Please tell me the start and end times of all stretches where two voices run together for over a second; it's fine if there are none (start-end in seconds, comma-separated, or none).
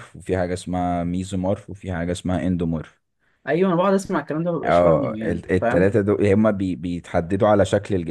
4.6-5.9